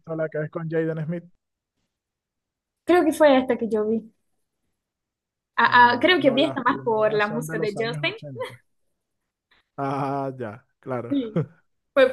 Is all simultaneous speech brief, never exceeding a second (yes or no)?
no